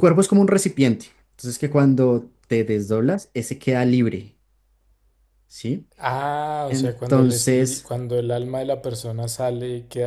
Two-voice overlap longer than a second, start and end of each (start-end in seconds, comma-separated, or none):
6.7-7.9